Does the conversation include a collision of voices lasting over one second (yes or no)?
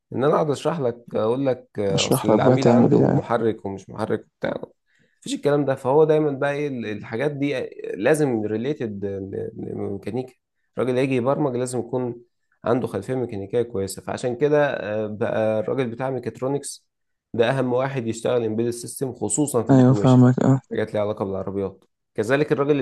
yes